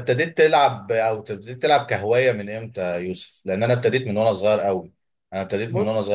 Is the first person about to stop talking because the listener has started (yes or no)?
no